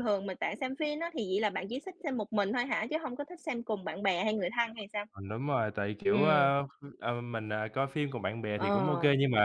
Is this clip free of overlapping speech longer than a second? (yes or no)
yes